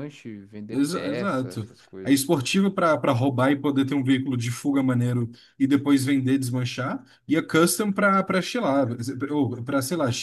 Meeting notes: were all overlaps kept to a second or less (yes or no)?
no